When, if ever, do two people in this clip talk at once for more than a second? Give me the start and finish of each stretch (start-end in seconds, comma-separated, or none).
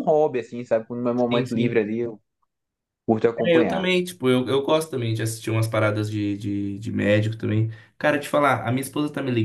none